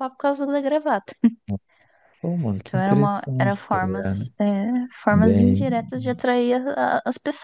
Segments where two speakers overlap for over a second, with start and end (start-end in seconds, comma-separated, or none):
2.6-4.3